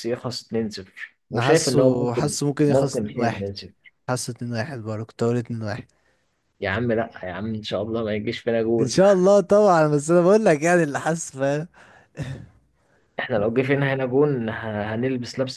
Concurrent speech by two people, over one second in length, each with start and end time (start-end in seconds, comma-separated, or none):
1.3-3.5